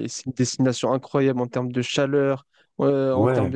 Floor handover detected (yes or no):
no